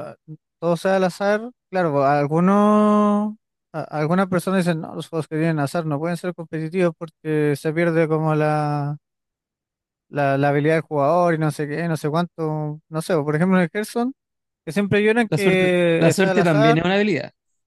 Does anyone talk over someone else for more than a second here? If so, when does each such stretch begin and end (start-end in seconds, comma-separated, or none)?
15.3-16.8